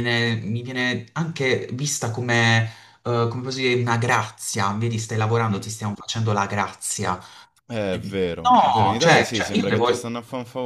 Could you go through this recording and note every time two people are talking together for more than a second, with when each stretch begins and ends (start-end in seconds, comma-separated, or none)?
7.9-9.9